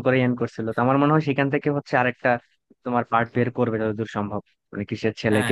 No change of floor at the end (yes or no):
no